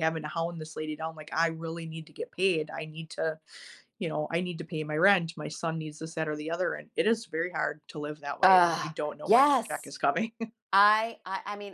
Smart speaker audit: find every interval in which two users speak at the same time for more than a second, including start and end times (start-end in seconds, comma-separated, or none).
8.4-9.9